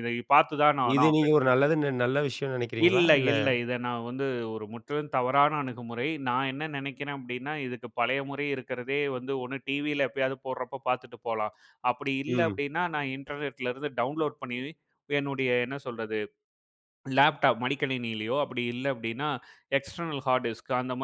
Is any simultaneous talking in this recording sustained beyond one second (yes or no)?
no